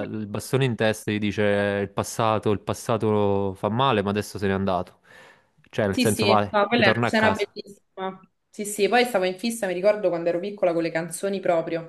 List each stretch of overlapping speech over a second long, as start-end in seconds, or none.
5.9-7.6